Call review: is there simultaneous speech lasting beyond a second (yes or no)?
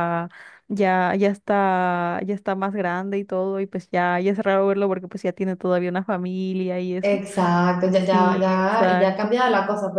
yes